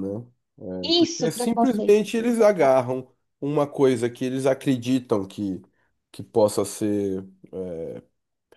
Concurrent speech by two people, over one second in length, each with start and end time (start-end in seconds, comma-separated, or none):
1.0-2.8